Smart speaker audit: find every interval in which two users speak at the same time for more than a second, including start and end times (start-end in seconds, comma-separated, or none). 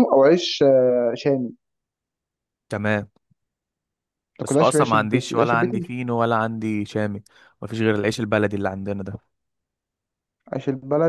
4.4-5.9